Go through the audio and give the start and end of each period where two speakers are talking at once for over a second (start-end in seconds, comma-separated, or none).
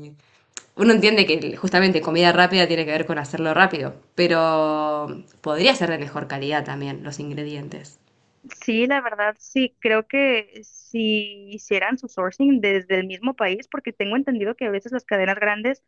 none